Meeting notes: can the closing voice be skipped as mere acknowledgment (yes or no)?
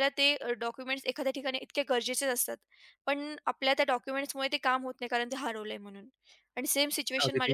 yes